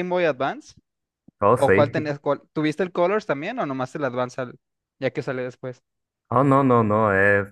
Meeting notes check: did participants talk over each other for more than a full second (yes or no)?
no